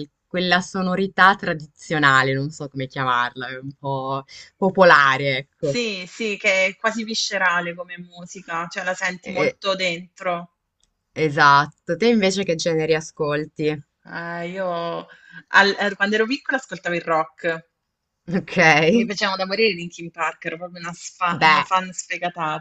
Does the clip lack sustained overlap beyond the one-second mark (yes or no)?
yes